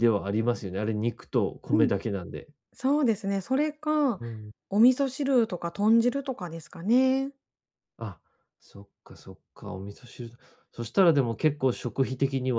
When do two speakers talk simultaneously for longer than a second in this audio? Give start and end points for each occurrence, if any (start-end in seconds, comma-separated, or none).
none